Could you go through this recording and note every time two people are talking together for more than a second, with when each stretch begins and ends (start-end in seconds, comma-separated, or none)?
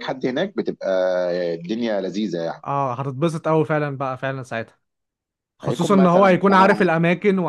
5.6-6.9